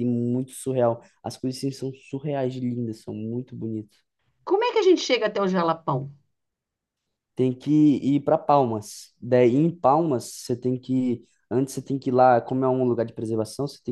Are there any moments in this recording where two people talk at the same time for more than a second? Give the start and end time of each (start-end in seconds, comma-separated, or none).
none